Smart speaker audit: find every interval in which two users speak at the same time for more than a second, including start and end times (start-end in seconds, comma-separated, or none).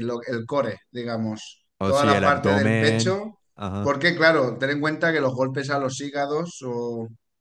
1.8-3.2